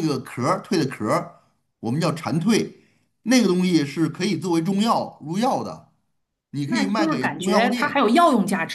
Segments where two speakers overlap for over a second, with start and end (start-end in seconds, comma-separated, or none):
6.7-8.1